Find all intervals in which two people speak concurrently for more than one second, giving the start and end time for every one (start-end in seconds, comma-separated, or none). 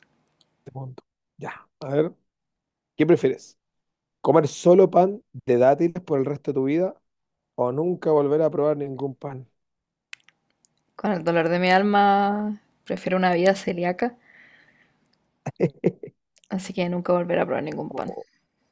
none